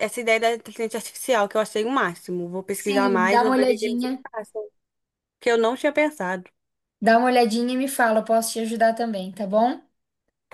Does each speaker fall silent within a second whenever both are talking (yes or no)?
no